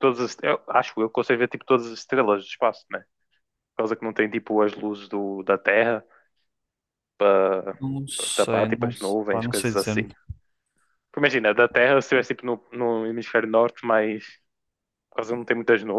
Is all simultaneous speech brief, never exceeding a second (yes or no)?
no